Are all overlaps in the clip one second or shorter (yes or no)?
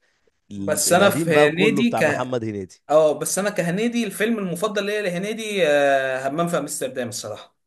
no